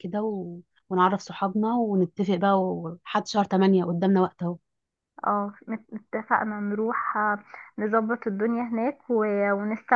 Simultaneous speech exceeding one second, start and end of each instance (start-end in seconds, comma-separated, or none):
none